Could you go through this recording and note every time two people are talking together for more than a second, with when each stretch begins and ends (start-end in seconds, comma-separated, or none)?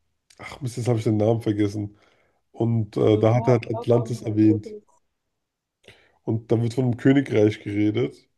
3.1-4.8